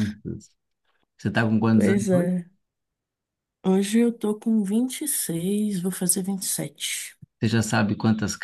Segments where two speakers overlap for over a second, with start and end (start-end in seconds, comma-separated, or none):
none